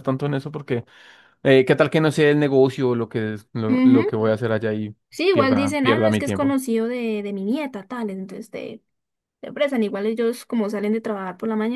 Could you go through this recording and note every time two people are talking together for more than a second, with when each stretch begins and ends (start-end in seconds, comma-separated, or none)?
5.3-6.6